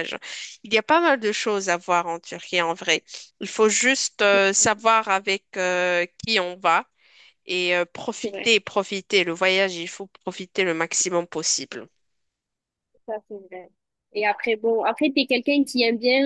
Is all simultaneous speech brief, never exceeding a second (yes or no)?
yes